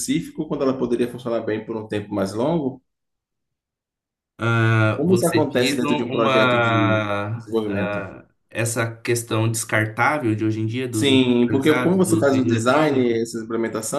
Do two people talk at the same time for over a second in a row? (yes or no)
yes